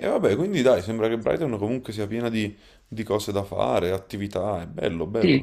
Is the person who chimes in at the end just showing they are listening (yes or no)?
no